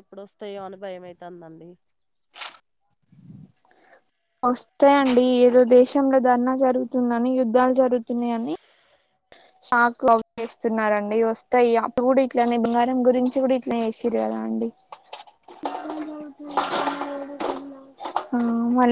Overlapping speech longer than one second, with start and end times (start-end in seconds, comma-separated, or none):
none